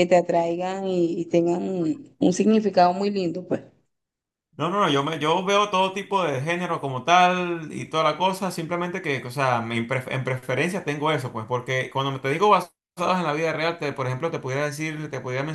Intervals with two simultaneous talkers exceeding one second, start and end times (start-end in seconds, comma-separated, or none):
none